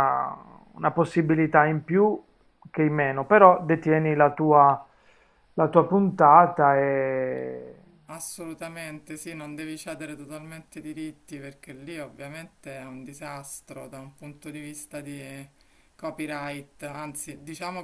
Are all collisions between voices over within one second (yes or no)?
yes